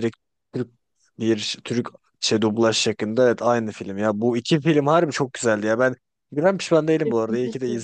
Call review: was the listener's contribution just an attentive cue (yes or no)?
yes